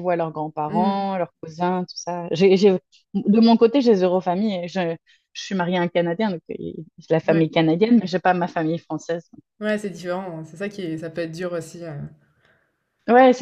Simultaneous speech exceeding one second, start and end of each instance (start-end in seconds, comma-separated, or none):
none